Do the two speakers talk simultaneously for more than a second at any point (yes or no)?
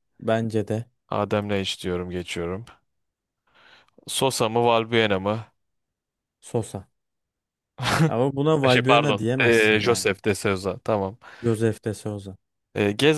yes